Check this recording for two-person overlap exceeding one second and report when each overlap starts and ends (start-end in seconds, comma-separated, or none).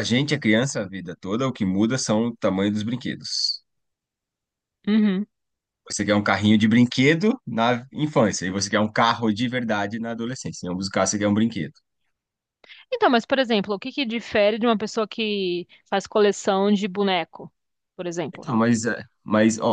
none